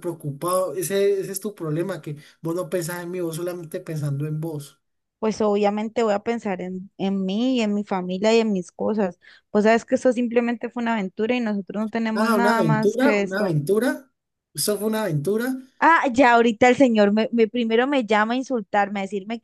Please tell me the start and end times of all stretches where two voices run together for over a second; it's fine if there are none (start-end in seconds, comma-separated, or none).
12.1-13.6